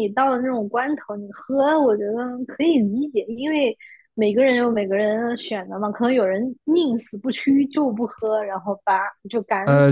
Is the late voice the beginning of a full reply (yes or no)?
yes